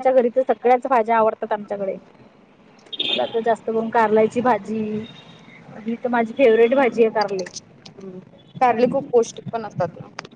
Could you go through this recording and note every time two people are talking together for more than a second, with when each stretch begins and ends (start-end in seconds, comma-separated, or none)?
none